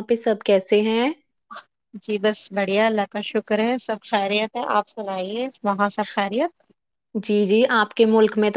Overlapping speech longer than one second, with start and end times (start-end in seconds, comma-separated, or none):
none